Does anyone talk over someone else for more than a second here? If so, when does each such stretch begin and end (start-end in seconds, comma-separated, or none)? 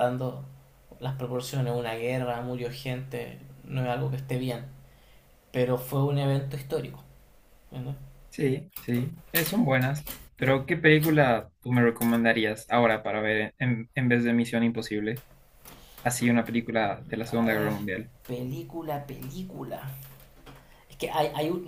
none